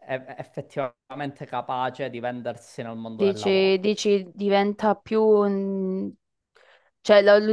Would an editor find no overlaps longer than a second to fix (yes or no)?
yes